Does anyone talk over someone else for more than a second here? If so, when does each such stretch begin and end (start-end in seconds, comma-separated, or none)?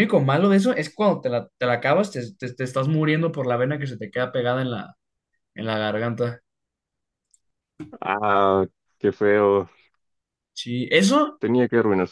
none